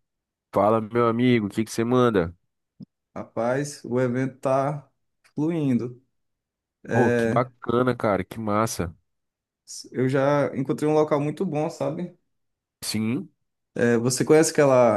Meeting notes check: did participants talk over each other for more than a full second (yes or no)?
no